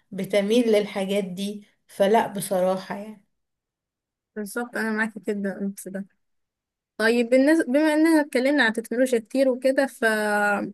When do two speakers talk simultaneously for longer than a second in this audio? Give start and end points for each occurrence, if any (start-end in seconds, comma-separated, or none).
none